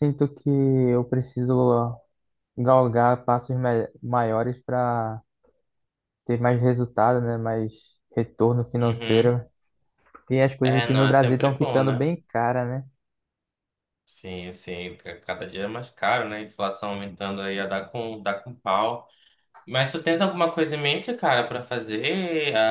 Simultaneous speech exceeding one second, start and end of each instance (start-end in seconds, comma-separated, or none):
10.6-12.1